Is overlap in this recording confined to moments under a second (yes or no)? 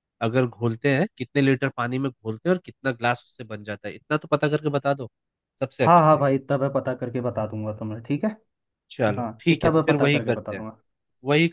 no